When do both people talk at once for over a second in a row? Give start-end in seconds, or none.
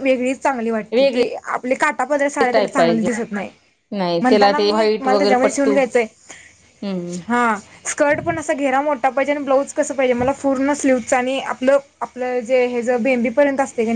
4.2-5.8